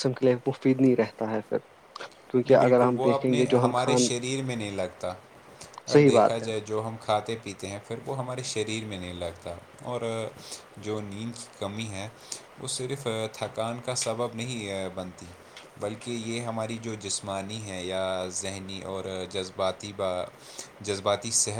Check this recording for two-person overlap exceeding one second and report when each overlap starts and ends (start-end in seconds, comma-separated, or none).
2.5-4.1